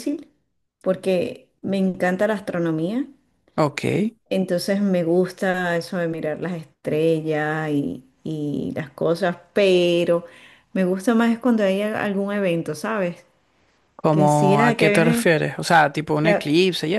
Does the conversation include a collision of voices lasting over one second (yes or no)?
yes